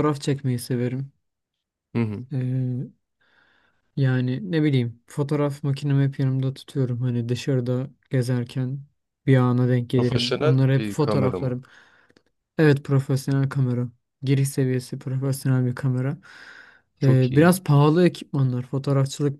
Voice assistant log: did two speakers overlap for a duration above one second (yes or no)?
yes